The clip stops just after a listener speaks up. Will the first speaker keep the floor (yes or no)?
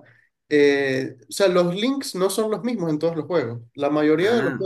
yes